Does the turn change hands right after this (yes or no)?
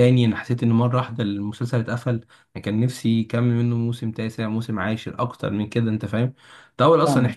no